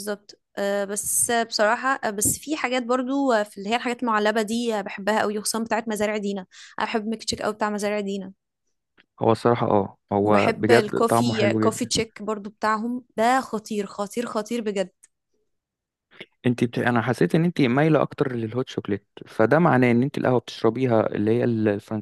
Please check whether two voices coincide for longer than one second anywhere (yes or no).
yes